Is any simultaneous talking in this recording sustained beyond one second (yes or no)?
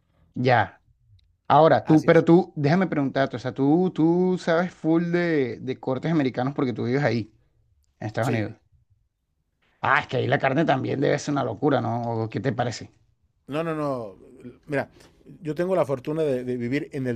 no